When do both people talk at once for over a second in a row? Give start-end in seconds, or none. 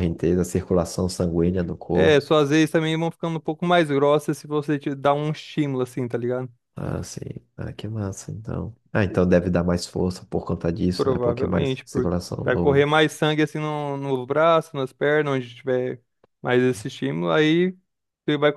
10.9-12.9